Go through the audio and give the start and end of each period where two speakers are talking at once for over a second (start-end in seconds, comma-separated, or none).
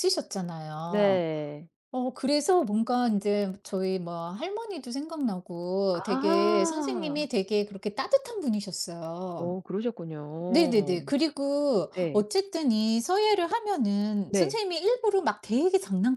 5.9-7.2